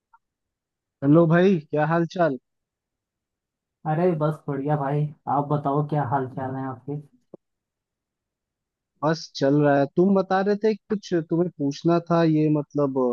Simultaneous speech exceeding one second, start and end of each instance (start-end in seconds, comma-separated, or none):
none